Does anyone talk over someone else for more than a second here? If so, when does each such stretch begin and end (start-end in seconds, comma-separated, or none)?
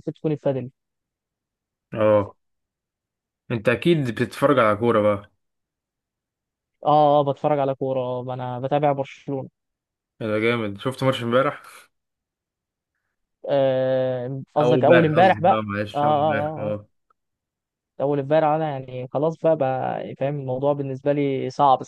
14.6-16.7